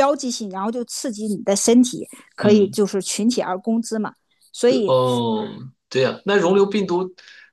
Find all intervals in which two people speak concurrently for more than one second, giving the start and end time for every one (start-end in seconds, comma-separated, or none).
none